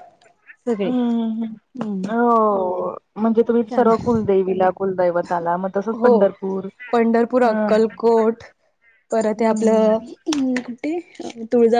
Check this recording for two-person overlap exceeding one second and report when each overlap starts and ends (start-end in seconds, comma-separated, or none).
none